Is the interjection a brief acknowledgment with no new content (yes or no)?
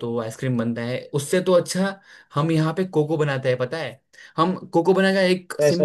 yes